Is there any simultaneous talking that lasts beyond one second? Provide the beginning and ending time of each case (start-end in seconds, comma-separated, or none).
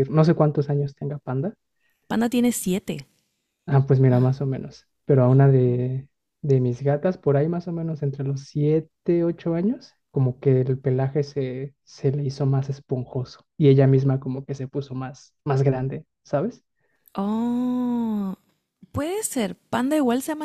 none